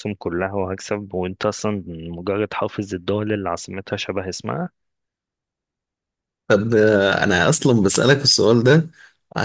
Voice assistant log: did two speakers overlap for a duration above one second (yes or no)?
no